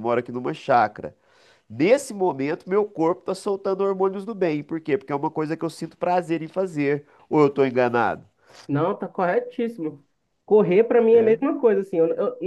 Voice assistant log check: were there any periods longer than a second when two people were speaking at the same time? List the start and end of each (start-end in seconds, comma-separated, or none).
none